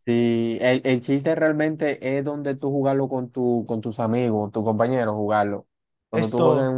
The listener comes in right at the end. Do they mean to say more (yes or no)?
no